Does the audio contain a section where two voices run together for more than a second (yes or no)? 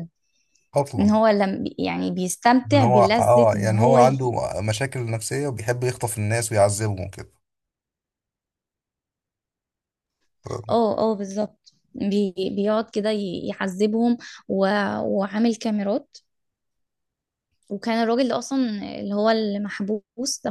yes